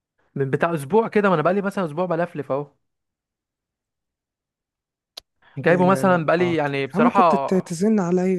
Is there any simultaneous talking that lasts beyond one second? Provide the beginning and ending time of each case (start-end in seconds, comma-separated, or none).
5.6-7.5